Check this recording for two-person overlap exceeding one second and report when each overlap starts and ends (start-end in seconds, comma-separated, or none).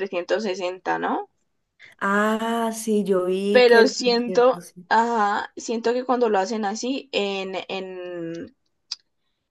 3.5-4.9